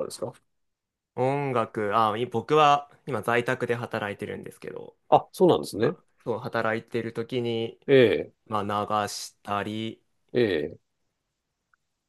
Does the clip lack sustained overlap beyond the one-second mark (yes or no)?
yes